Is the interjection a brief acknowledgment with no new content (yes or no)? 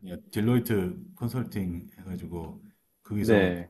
yes